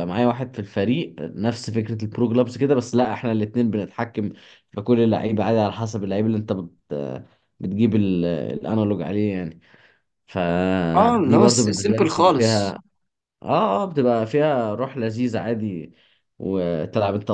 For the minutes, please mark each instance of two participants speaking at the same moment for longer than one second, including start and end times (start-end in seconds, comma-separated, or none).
10.9-12.8